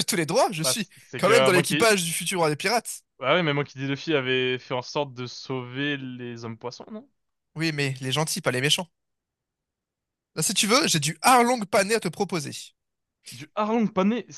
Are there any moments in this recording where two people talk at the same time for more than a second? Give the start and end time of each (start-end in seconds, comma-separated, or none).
0.6-1.9